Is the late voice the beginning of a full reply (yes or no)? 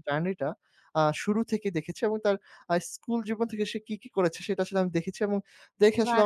no